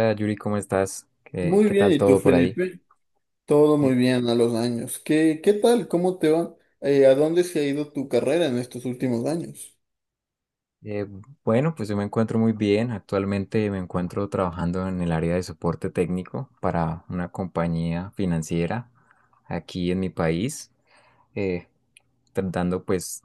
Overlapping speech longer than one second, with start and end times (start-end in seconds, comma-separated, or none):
1.4-2.6